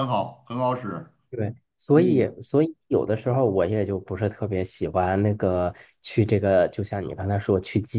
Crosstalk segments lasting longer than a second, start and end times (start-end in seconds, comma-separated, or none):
none